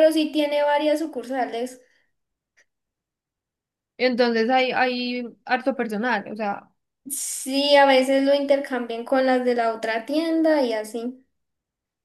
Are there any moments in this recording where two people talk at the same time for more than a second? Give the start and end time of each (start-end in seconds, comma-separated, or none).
none